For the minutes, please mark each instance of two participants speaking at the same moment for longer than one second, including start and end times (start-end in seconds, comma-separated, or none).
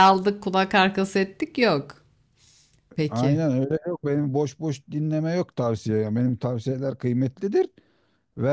none